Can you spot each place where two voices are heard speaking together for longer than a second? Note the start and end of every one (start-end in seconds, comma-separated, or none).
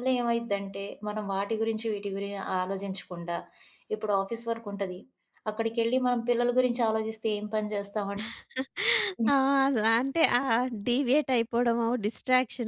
none